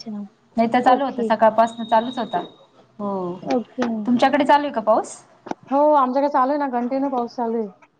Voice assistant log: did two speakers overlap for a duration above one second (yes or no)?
no